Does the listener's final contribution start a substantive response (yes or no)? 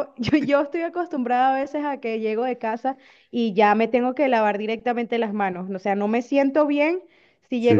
no